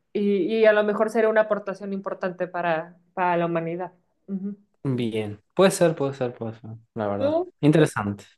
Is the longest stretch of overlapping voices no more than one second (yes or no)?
yes